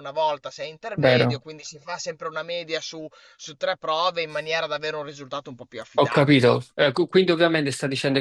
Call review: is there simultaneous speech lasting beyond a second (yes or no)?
no